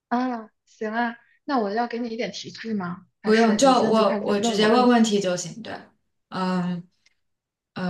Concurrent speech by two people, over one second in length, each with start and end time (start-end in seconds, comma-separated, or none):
3.2-5.1